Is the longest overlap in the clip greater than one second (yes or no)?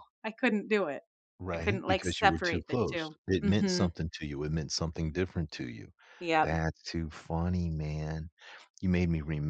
yes